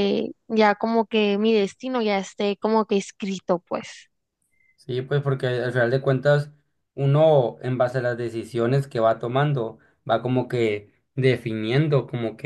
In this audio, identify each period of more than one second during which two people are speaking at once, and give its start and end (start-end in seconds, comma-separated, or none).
none